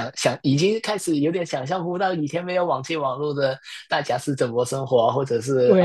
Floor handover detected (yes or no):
yes